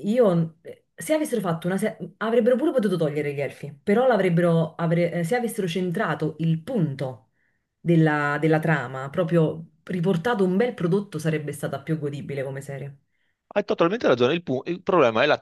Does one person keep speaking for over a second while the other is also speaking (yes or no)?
no